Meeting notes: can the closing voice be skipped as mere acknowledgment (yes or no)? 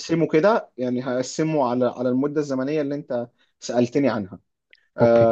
yes